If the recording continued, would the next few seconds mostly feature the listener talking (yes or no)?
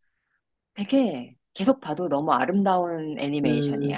yes